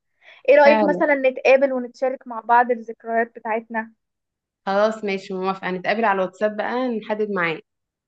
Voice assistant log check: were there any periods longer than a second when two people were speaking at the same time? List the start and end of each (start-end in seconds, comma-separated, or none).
none